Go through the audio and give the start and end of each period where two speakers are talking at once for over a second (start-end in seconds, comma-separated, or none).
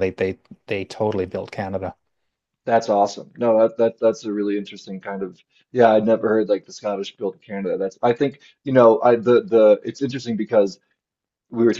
none